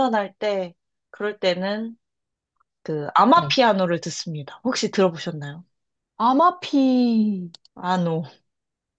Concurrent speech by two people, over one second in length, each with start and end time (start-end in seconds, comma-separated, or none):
none